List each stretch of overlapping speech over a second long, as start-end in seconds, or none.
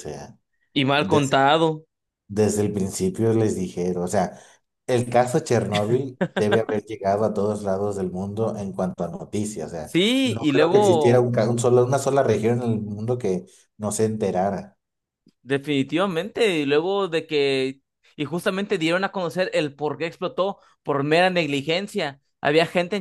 9.8-11.3